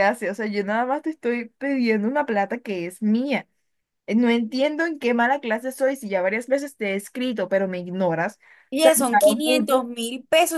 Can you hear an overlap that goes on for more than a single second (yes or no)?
no